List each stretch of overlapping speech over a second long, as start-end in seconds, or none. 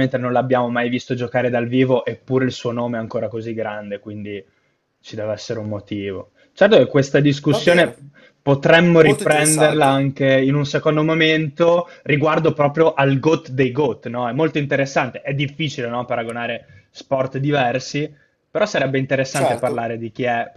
8.9-10.1